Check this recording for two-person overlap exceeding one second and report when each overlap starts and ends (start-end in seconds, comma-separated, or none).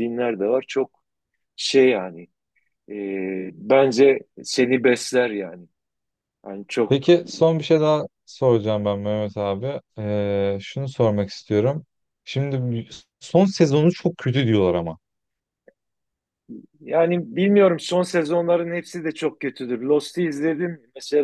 none